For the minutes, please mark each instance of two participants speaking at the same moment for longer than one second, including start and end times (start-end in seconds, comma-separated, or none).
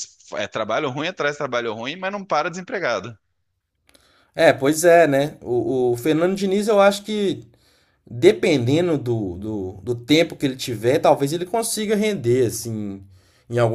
none